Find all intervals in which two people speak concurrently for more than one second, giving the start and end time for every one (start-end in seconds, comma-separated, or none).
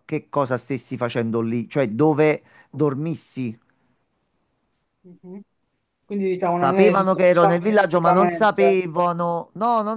6.5-8.8